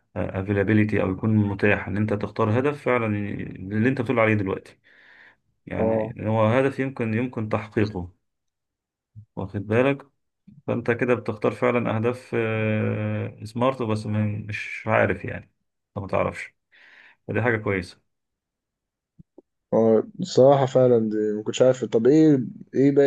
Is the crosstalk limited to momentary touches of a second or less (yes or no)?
yes